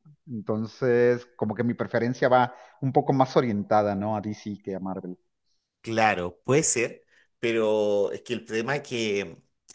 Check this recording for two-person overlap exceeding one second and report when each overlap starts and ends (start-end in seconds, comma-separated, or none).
none